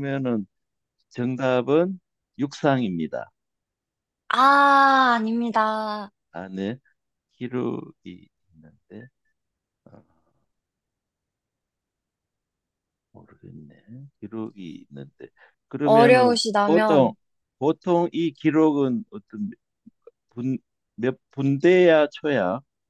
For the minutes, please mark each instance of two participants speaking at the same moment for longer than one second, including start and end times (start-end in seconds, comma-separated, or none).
15.8-17.1